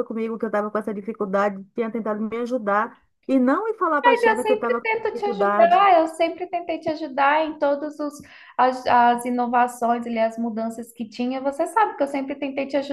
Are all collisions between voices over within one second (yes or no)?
no